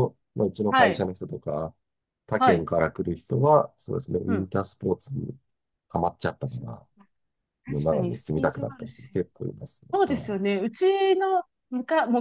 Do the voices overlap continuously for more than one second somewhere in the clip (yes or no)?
yes